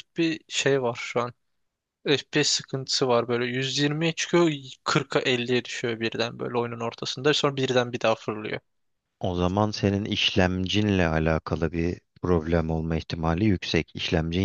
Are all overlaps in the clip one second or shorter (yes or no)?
yes